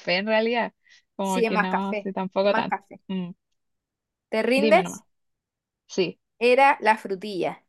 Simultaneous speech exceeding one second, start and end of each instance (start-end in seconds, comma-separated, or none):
1.2-3.0